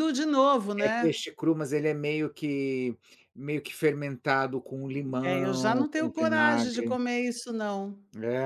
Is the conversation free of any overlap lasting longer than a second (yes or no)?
no